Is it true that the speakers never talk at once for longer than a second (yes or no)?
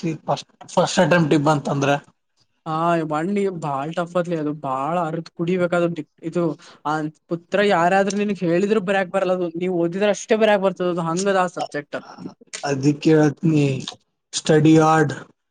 yes